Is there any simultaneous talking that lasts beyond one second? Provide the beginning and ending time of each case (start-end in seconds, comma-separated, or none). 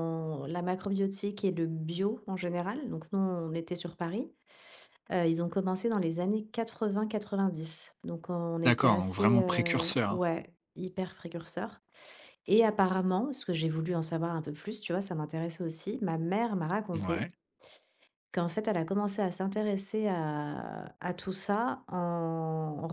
8.6-10.3